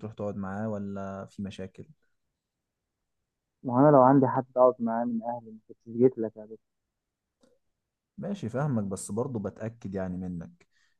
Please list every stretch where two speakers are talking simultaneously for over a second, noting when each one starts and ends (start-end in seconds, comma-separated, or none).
none